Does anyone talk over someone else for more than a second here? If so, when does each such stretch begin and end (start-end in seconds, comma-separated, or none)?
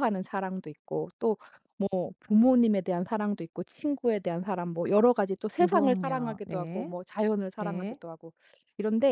5.5-7.0